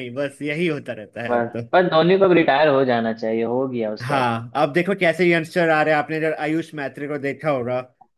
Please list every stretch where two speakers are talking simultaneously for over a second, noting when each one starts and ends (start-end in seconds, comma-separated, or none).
none